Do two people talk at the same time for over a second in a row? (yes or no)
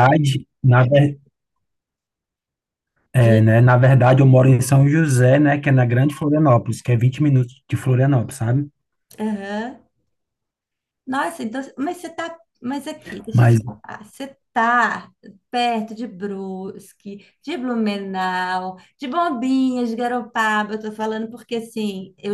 no